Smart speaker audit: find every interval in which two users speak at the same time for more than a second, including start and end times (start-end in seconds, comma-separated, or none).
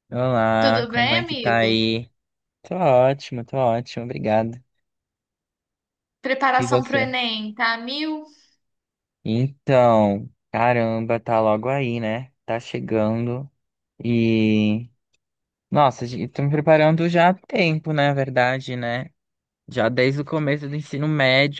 0.6-1.8